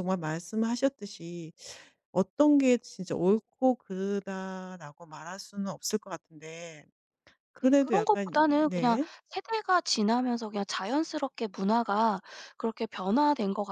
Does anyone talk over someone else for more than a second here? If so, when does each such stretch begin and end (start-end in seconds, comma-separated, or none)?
7.6-9.1